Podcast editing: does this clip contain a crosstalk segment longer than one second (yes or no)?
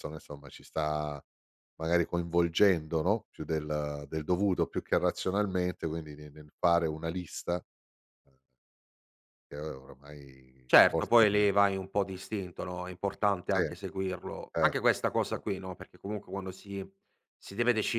no